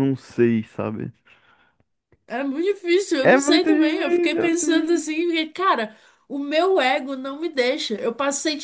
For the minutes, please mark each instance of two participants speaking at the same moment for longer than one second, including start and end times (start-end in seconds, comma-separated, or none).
3.2-5.2